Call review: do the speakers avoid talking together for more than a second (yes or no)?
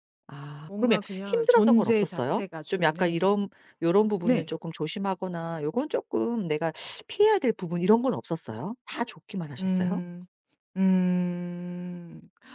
no